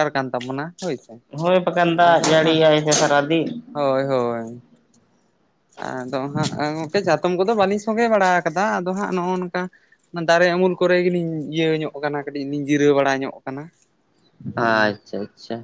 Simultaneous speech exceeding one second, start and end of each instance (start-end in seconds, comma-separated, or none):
none